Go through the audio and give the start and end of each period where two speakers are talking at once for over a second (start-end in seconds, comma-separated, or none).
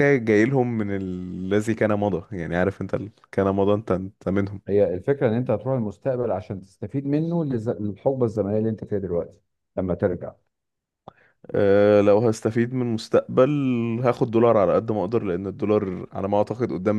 none